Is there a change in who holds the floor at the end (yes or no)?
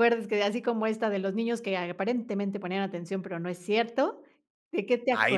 yes